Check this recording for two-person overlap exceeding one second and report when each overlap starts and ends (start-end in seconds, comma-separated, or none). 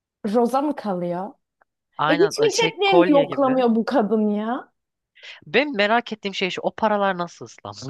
2.1-3.6